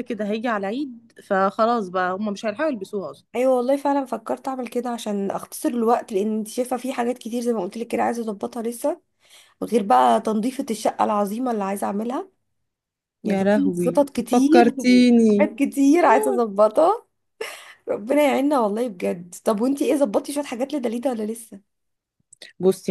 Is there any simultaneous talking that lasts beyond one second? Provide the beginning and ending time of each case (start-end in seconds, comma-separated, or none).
13.2-15.5